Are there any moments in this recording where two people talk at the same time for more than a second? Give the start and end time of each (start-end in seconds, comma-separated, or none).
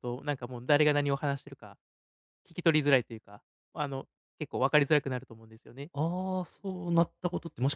none